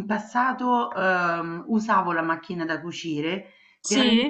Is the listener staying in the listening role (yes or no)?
yes